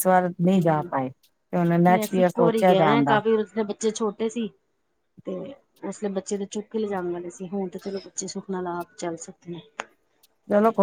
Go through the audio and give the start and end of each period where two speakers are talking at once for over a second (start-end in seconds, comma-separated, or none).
1.9-3.2